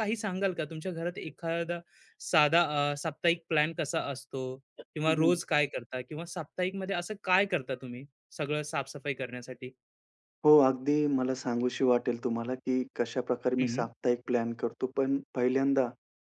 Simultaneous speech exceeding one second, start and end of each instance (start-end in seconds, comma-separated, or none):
none